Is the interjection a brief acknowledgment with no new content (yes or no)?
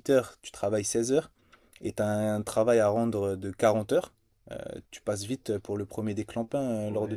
no